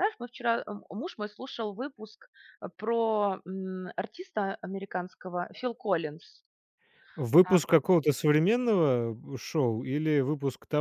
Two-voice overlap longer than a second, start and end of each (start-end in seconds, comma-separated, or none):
none